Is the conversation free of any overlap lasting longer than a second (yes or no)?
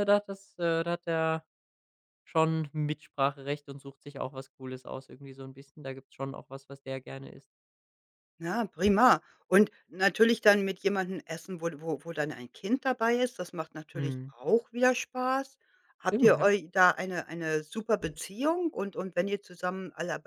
yes